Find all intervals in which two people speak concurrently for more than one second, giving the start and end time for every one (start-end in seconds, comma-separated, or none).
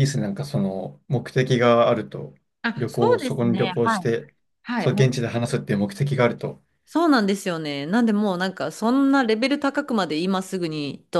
2.8-4.1